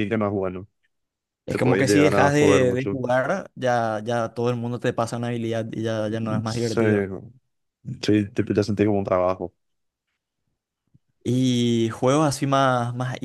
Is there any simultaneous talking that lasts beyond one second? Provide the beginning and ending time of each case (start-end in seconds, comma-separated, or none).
1.5-3.0